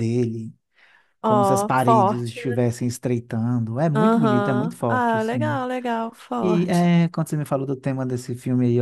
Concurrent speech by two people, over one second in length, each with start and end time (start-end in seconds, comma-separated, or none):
1.2-2.6, 4.0-5.6